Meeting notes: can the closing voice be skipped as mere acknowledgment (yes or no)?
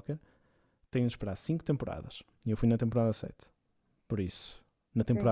yes